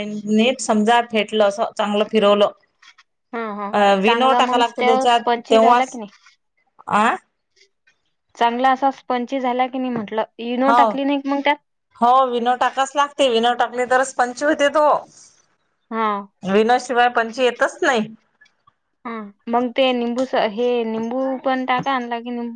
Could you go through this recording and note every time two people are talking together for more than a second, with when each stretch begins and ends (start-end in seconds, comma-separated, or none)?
3.8-6.0